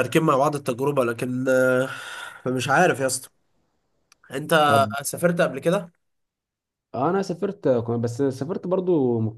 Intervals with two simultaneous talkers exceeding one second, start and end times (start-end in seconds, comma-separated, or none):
none